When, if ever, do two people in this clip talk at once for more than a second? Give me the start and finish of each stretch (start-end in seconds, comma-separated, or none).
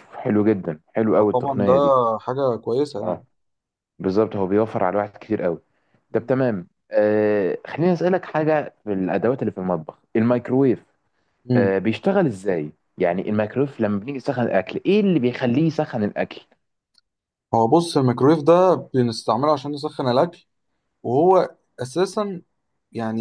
none